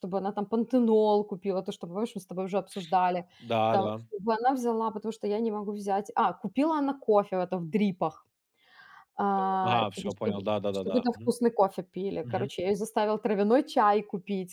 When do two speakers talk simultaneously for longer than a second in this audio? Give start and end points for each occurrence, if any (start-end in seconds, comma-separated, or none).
9.6-11.3